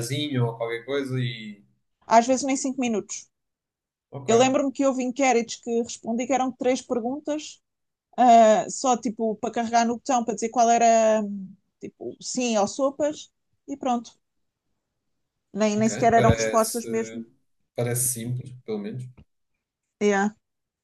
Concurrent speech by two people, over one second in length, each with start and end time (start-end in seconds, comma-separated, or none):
15.8-17.2